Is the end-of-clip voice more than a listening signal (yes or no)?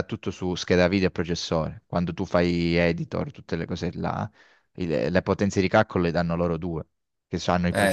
no